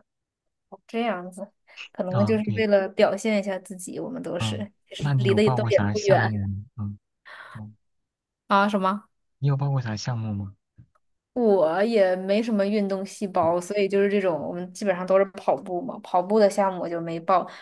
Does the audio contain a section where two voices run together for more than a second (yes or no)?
yes